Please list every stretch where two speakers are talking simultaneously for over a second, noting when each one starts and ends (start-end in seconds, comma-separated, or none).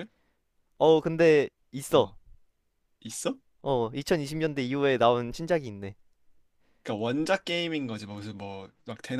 none